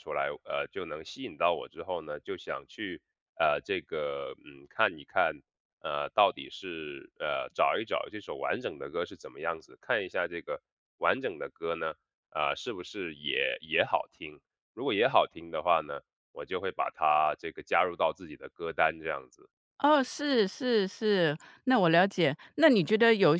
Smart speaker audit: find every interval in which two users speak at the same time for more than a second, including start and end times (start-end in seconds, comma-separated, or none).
none